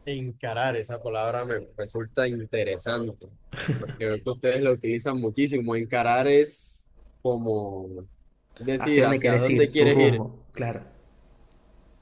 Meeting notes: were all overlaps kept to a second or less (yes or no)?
no